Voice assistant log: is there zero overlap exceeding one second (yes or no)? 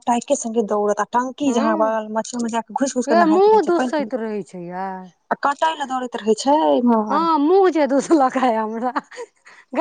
no